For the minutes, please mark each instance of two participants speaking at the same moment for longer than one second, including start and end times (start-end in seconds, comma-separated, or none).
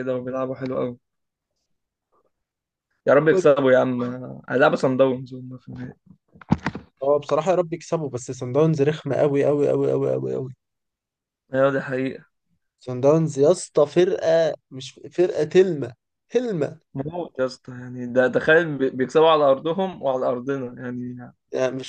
none